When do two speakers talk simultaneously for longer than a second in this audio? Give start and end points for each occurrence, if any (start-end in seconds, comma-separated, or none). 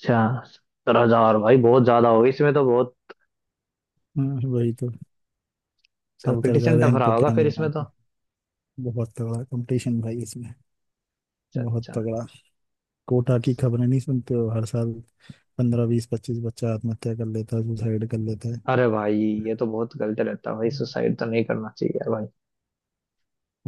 6.3-7.8